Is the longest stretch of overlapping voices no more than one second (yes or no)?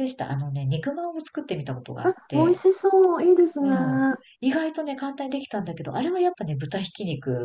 yes